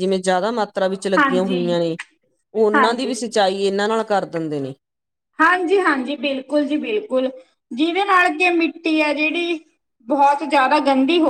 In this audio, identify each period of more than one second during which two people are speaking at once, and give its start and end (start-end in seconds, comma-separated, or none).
none